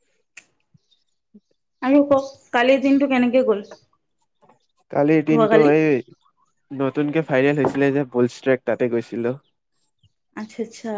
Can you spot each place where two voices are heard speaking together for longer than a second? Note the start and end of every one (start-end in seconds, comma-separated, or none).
none